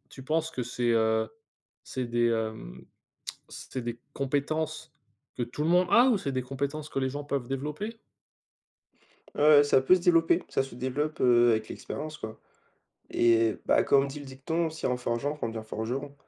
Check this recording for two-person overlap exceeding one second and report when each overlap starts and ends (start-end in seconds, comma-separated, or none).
none